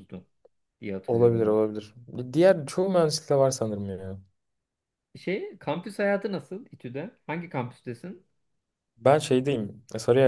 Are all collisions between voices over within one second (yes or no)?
yes